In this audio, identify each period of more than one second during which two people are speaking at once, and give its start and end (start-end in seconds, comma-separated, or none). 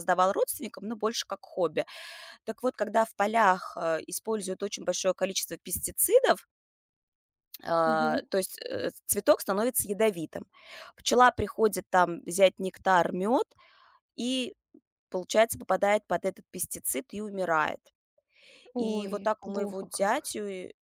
18.8-20.3